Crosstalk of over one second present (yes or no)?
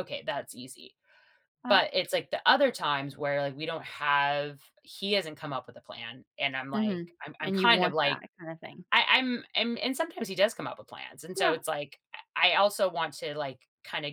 yes